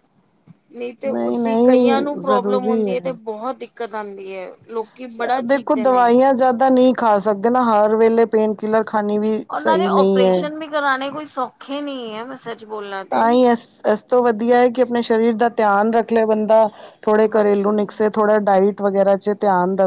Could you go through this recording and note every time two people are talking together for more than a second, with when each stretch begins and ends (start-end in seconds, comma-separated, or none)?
1.1-3.2